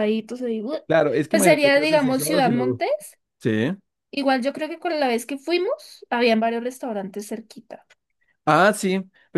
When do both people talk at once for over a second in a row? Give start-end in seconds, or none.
1.3-2.8